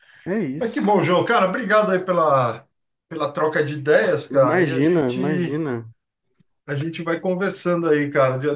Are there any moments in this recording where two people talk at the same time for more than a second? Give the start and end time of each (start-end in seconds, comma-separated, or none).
4.4-5.6